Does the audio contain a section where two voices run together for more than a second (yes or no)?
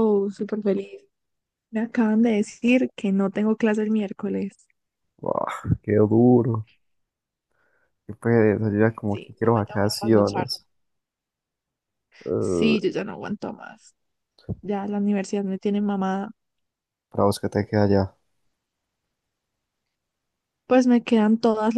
yes